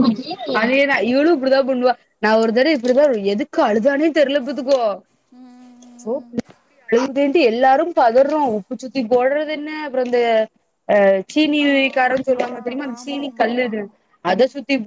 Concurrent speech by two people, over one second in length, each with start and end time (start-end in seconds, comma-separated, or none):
11.7-13.8